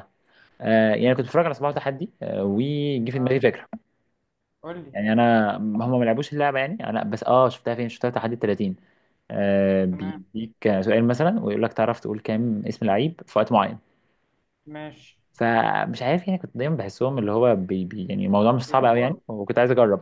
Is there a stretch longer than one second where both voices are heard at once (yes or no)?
no